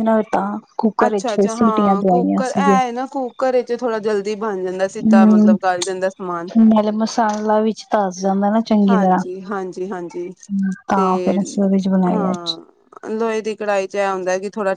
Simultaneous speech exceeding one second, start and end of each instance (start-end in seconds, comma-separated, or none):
1.1-2.8